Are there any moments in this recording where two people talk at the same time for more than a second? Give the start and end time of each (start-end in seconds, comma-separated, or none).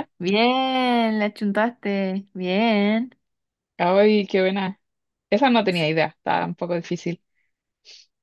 none